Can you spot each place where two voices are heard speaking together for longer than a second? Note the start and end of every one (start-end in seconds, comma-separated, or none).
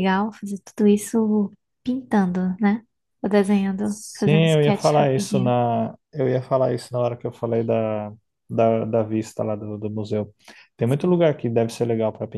3.8-5.5